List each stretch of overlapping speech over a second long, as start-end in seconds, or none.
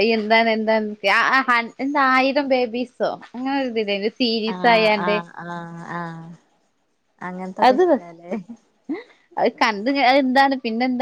none